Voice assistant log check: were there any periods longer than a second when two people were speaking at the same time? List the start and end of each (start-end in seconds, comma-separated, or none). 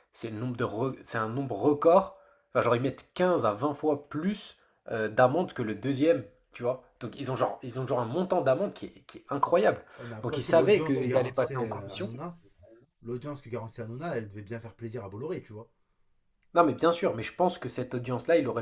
10.2-12.1